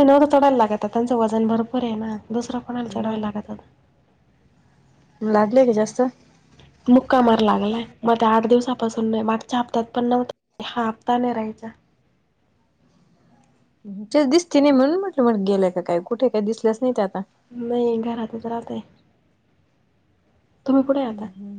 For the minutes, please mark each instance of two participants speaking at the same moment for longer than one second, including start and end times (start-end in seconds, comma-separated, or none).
none